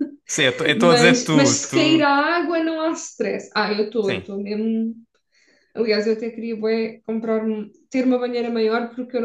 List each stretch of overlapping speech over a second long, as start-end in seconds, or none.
0.8-2.1